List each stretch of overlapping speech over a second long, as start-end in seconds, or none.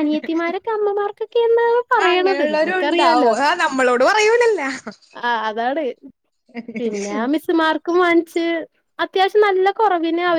none